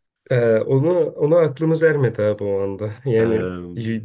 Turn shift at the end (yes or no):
no